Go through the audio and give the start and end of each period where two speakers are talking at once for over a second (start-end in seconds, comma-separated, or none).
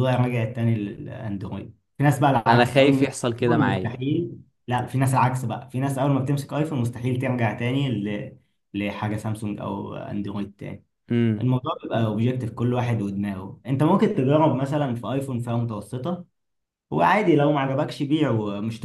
2.5-4.0